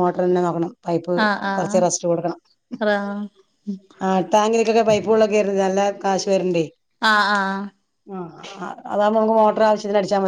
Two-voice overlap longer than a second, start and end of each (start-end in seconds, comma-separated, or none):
none